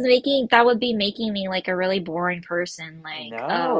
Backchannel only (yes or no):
no